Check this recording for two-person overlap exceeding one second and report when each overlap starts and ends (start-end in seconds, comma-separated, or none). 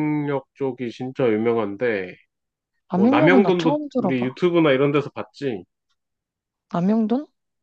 2.9-4.4